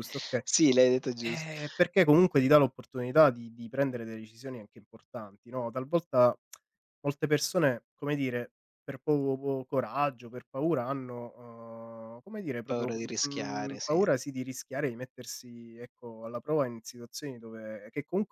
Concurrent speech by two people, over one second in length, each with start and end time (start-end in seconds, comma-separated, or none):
12.7-14.0